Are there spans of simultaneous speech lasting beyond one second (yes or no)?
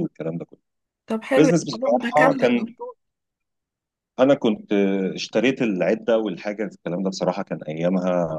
yes